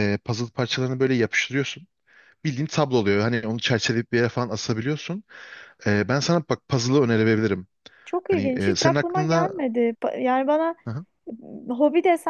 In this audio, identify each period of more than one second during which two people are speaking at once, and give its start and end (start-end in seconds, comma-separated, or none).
8.2-9.5